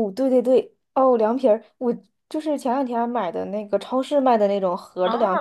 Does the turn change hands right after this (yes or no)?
yes